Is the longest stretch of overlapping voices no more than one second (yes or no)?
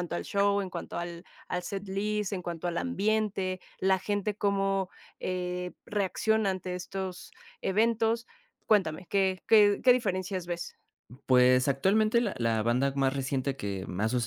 yes